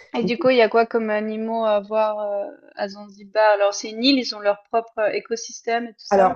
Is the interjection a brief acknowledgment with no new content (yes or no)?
no